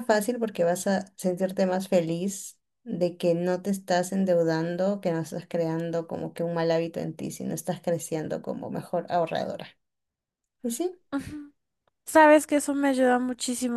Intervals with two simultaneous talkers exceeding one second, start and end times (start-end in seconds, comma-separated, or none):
none